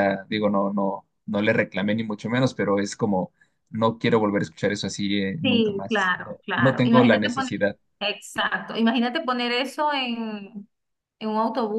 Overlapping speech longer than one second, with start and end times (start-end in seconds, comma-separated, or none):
5.4-7.5